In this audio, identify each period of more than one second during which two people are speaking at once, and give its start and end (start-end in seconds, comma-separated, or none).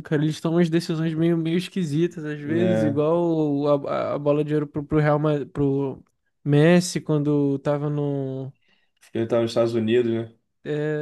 none